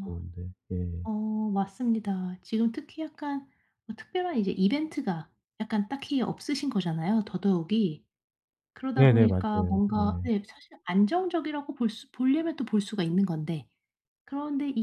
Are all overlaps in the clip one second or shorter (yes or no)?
no